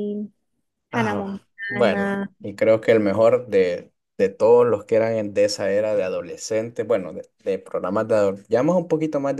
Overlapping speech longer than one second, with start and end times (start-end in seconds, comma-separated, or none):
0.9-2.3